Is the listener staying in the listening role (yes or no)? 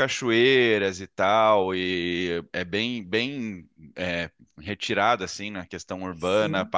yes